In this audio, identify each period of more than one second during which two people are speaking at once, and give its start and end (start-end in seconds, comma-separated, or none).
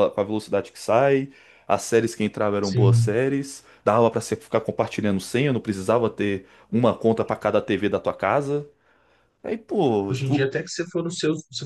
none